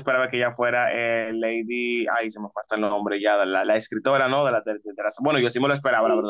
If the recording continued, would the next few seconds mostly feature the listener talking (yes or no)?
no